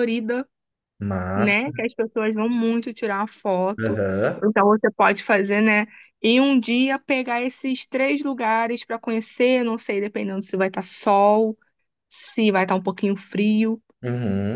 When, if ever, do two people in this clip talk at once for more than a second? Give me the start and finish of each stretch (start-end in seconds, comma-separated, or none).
none